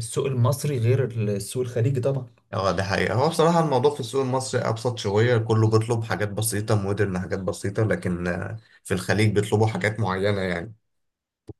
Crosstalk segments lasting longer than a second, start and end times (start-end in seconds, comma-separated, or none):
none